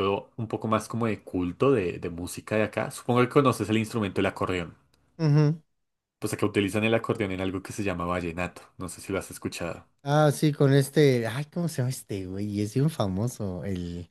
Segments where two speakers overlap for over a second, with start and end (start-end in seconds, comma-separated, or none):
none